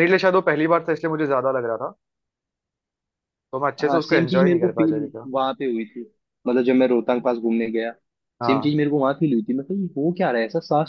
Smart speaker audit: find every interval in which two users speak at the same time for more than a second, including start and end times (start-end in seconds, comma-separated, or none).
3.8-5.3